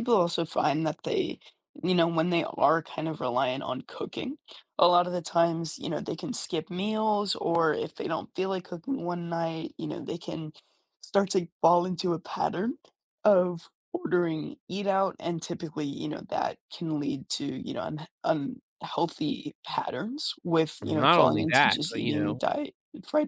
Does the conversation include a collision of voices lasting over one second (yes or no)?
yes